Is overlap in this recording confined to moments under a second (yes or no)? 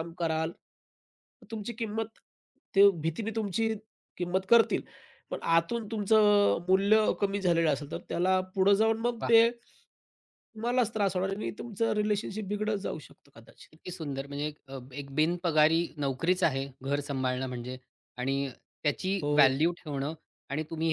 yes